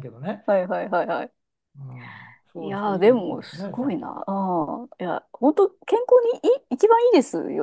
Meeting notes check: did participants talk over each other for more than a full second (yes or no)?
yes